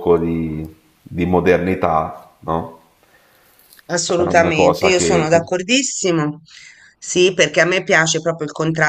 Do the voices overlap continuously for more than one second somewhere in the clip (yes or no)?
yes